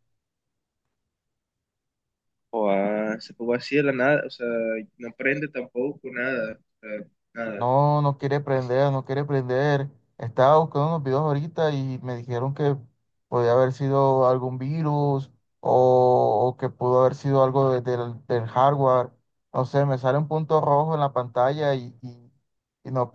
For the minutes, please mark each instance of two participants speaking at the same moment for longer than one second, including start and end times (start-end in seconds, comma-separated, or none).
none